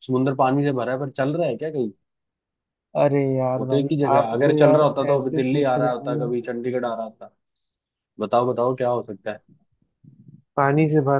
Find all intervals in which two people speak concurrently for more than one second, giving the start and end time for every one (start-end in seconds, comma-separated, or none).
3.6-6.3